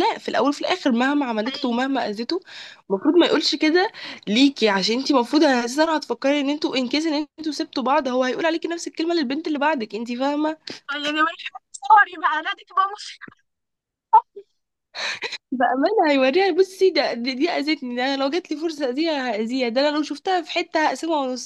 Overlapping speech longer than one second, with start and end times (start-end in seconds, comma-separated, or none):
none